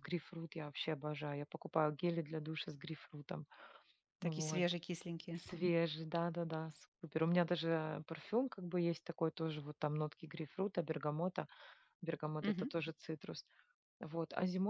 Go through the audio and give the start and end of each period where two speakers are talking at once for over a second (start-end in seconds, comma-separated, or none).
none